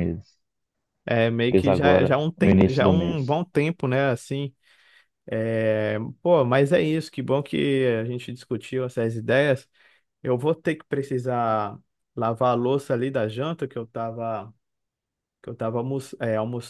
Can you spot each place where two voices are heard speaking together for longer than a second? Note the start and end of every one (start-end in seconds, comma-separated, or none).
1.5-3.4